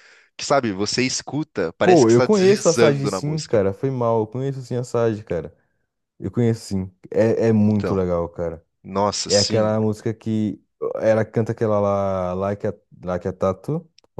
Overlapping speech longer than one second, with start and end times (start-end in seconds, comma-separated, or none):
1.8-3.6